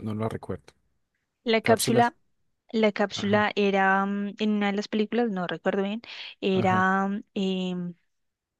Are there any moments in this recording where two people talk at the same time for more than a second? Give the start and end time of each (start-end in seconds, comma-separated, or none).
none